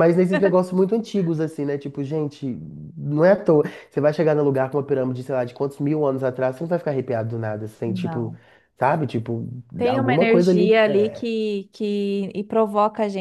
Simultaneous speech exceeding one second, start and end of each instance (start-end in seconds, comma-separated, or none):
9.9-11.2